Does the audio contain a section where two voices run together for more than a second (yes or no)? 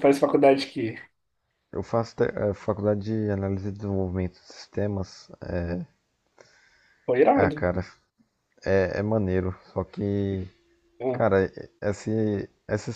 no